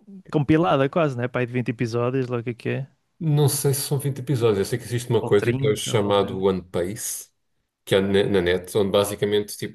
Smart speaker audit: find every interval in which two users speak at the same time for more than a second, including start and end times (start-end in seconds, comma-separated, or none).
5.2-6.5